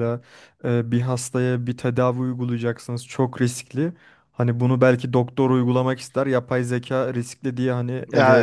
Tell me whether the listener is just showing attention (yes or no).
no